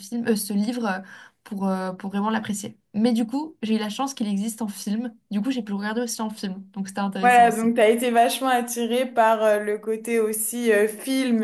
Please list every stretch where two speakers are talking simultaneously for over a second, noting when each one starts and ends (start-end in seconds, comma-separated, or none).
none